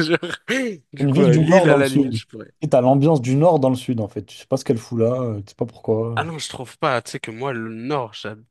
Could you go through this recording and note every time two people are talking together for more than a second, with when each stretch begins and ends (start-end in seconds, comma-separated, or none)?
1.0-2.2